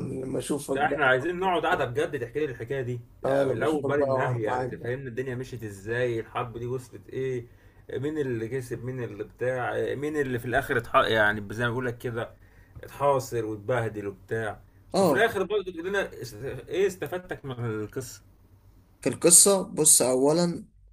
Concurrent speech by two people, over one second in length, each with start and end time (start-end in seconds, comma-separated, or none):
3.2-4.9